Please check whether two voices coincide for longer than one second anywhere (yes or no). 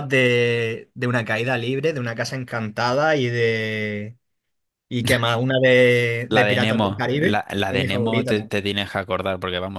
yes